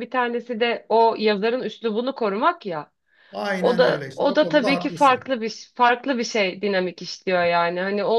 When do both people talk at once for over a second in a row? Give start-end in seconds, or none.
3.6-5.3